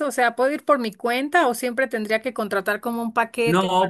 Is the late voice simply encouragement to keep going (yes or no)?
no